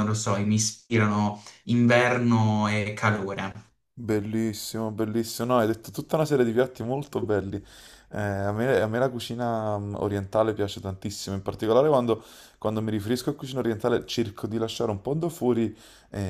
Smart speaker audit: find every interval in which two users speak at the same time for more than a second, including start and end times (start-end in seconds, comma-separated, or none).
none